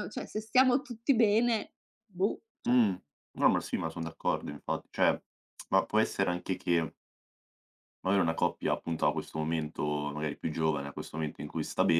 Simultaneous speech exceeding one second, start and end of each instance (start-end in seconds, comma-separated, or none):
none